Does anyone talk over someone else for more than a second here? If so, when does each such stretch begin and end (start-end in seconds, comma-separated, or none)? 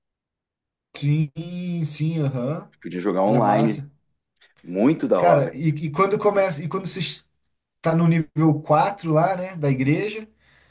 none